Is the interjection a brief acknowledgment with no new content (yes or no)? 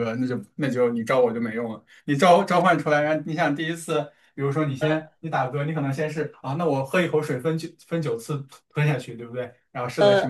yes